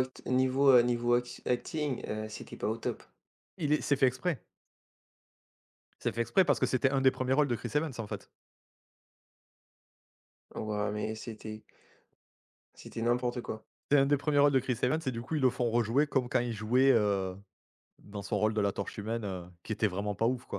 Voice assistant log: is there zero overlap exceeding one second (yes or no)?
yes